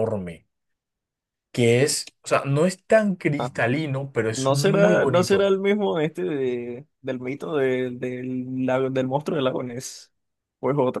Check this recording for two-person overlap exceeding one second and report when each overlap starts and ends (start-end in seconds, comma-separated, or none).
4.3-5.5